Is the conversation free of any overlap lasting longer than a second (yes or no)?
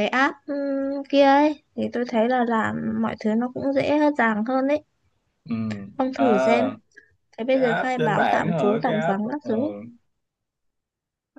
no